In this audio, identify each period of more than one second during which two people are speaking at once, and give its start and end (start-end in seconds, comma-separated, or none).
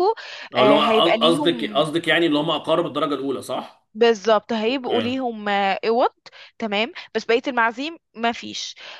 0.6-1.9